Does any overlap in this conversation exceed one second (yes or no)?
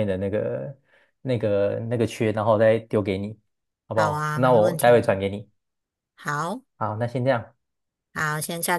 yes